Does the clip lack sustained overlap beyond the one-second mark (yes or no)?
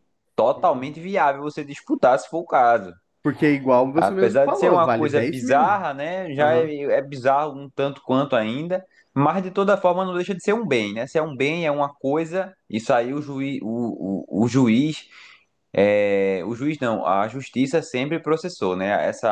no